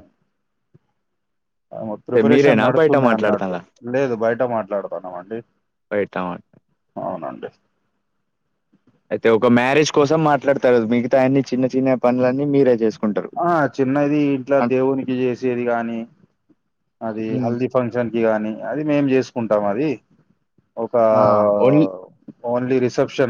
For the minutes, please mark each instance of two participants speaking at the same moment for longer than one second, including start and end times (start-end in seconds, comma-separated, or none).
2.1-3.5